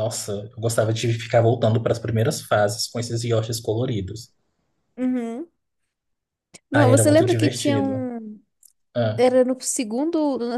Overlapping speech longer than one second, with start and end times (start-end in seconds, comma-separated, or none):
6.7-8.0